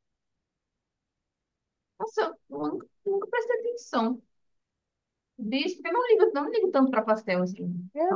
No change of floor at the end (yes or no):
no